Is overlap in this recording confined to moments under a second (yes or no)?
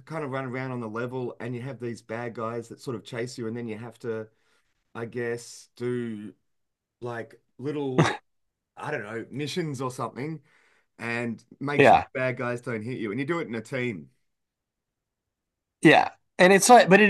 yes